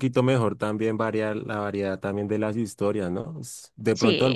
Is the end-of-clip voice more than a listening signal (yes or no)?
no